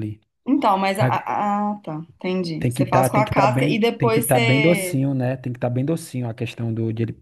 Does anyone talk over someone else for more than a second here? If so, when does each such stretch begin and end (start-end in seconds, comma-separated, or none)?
2.6-5.0